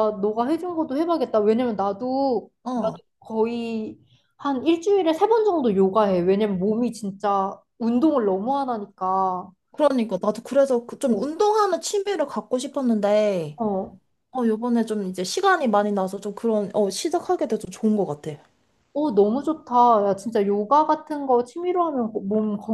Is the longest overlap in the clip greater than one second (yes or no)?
no